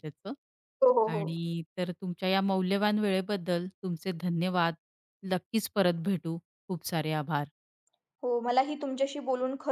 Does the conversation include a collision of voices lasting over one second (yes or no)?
no